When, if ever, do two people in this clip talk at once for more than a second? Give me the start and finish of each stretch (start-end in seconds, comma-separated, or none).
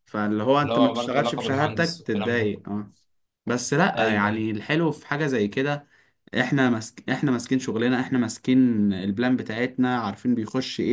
0.6-2.5